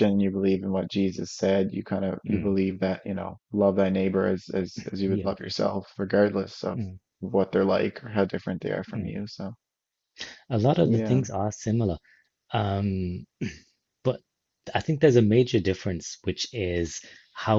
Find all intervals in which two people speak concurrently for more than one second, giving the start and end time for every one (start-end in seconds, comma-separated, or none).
none